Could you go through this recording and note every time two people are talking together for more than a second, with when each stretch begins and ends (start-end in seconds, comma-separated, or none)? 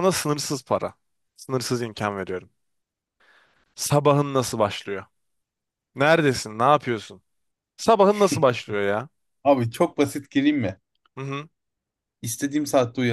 none